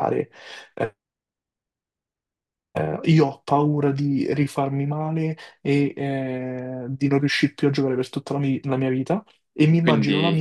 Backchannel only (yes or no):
yes